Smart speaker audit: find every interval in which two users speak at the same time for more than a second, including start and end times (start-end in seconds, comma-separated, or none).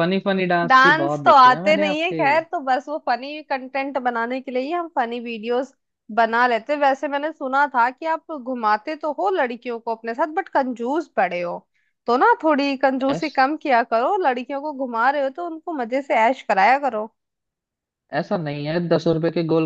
0.7-2.2